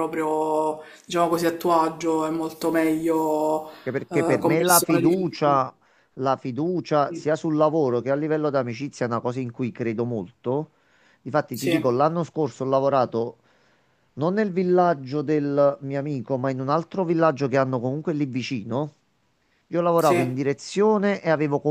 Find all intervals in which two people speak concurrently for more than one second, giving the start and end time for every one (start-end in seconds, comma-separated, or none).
4.1-5.4